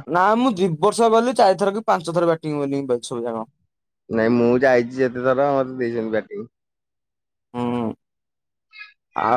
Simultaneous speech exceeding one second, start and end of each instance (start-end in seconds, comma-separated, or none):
none